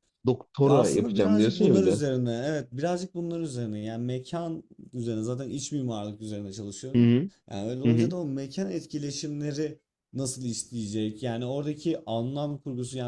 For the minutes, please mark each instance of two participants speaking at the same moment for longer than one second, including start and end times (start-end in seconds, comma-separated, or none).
0.6-2.0